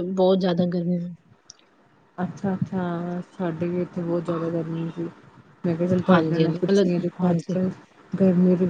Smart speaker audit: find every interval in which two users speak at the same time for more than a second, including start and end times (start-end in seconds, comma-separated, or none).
6.1-7.6